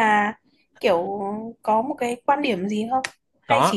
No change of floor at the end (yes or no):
yes